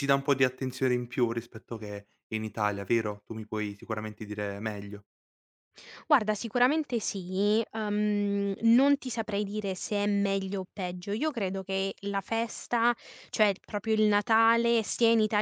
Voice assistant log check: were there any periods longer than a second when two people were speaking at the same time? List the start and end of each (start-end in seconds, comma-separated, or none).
none